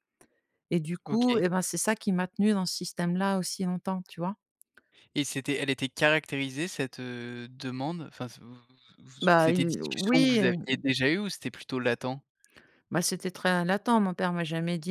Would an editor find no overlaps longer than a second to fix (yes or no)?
no